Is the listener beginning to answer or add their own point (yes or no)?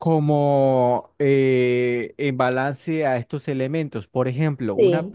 no